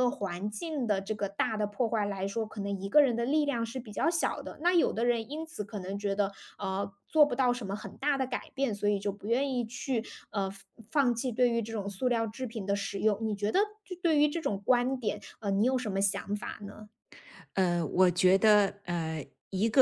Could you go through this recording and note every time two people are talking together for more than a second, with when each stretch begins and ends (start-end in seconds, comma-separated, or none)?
none